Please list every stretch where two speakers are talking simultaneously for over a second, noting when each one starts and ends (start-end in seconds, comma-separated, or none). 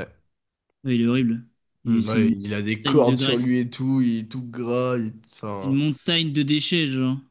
1.9-3.6